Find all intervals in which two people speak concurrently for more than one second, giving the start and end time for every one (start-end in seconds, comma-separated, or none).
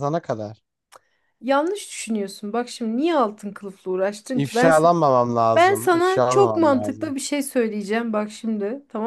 5.5-7.2